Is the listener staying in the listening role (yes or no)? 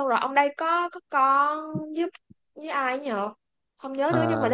yes